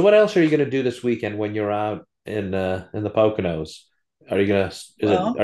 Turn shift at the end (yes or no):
no